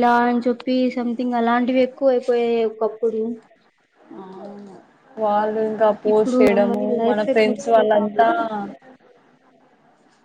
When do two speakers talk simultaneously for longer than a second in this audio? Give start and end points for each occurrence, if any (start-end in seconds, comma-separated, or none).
6.1-8.2